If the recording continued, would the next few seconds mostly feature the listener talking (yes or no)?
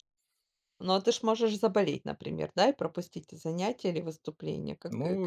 yes